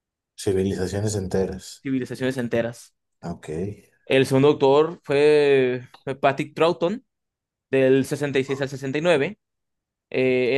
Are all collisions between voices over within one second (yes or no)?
yes